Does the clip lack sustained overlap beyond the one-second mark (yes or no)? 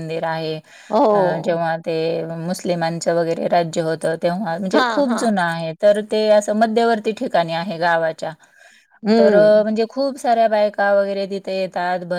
yes